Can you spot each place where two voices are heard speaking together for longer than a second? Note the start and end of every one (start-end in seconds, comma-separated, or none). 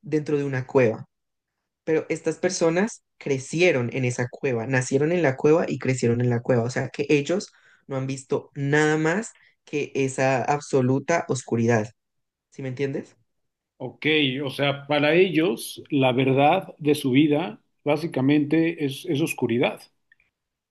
none